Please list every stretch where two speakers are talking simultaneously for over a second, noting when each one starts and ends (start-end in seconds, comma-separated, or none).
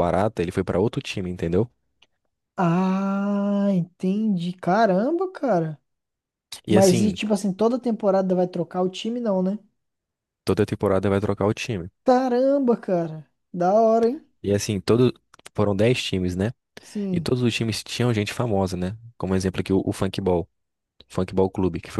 none